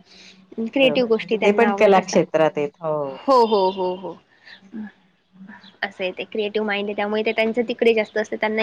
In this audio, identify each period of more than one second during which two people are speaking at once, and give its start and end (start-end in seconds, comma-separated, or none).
0.8-2.2